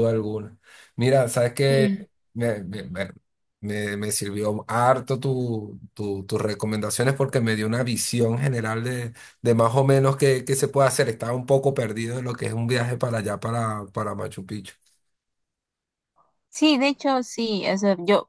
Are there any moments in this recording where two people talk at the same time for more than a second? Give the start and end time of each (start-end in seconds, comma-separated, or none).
none